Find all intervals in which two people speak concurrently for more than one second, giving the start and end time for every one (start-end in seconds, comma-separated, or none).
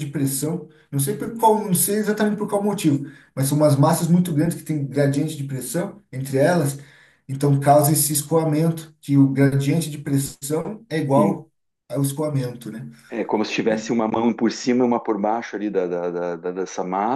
none